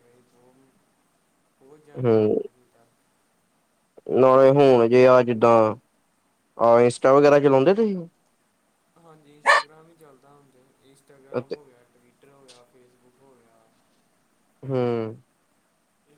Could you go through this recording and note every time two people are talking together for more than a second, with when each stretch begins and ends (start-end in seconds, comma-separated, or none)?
none